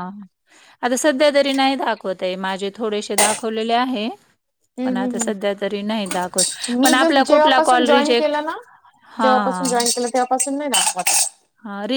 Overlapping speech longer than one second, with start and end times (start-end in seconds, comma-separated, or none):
6.8-8.4